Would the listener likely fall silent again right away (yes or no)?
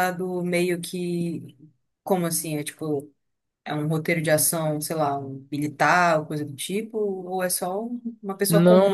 no